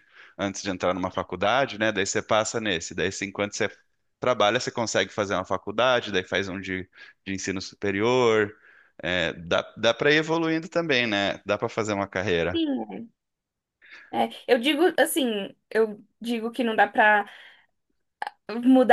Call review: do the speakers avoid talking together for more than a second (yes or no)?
yes